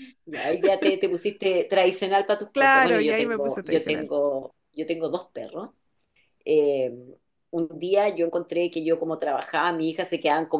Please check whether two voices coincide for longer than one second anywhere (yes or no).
yes